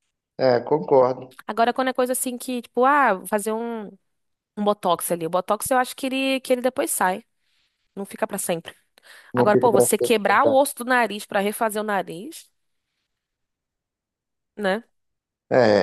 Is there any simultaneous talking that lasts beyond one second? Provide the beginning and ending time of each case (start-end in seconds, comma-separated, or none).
9.3-10.6